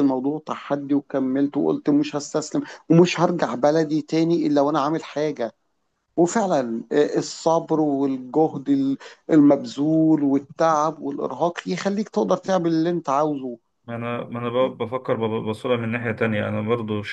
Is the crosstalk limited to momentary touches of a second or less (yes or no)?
yes